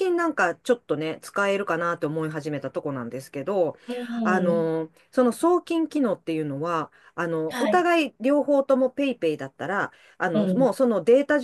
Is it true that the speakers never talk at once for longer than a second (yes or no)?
yes